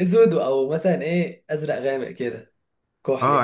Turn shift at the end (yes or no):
yes